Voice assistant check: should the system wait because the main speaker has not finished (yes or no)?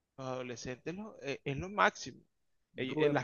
yes